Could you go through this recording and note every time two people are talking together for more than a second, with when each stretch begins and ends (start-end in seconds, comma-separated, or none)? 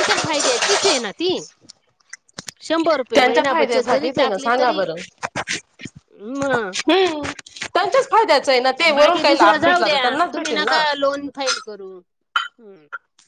3.1-4.8, 9.0-10.8